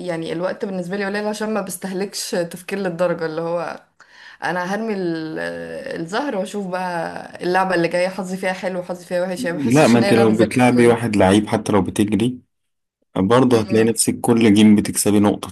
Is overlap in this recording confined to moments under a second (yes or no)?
no